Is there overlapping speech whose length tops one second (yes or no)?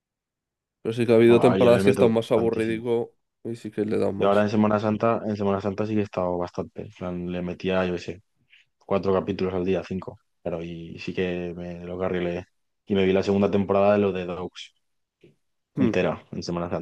yes